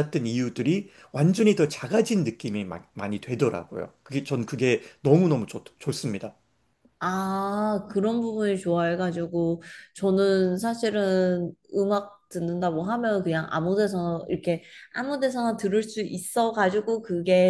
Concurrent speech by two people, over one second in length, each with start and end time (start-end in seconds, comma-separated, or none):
none